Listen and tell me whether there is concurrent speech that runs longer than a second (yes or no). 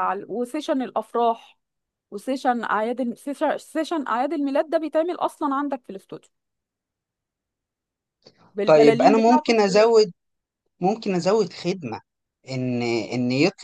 yes